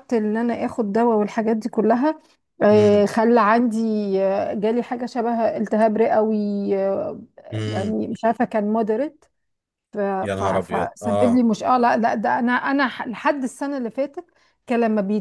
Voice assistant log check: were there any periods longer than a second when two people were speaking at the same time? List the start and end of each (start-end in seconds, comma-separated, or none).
10.2-11.5